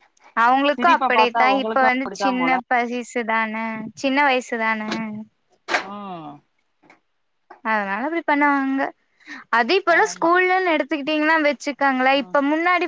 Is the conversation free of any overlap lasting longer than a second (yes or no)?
no